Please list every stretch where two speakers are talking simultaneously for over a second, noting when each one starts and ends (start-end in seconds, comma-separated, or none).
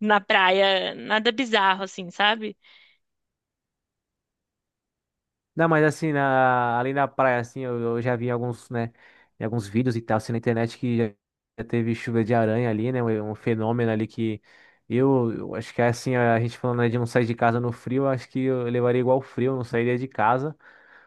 none